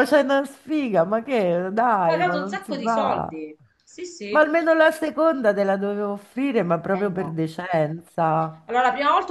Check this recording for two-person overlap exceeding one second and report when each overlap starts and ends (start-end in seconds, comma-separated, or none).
1.9-3.4